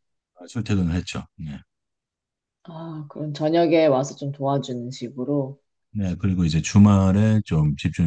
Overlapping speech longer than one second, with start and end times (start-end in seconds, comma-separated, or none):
none